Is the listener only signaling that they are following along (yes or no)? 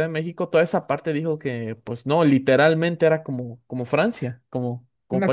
no